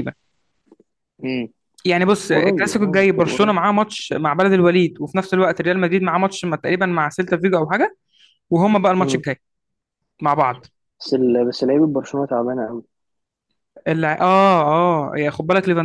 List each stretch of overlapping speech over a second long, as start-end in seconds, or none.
2.3-3.6